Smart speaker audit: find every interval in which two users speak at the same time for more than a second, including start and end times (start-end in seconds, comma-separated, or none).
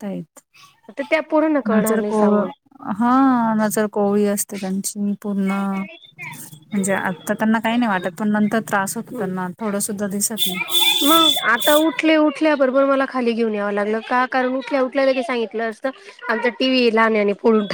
none